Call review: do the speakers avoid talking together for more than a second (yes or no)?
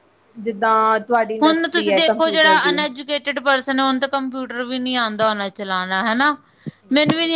no